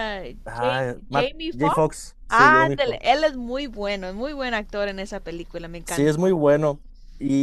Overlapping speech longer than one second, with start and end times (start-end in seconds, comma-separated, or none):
0.6-3.2